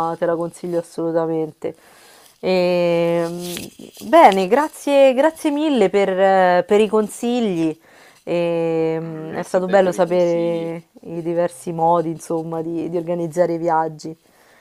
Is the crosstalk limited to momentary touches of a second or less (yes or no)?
no